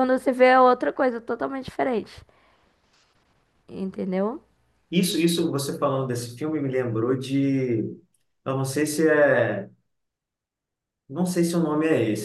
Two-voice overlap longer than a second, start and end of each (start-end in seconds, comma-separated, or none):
none